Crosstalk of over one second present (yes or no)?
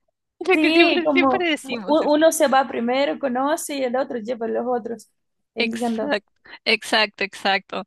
yes